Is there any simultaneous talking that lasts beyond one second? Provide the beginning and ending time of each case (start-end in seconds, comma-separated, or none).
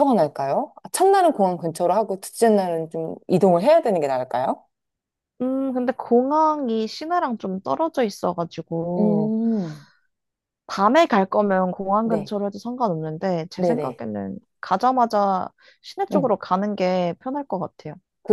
none